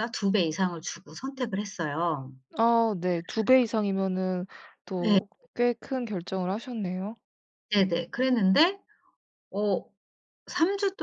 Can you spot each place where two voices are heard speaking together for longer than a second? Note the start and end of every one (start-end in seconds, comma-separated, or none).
none